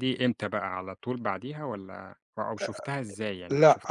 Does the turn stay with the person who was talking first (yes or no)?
no